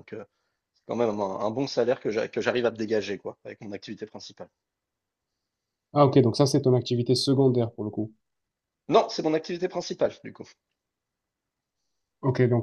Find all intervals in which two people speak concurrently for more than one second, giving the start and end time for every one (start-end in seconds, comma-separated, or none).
none